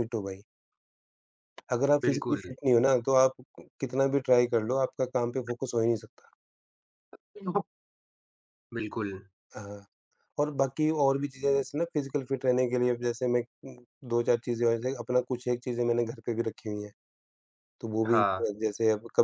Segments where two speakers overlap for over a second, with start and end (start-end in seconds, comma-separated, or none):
none